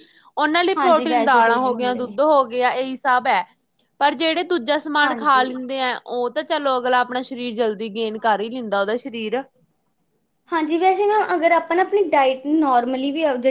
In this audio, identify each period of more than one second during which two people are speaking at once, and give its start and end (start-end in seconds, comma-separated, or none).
0.8-2.1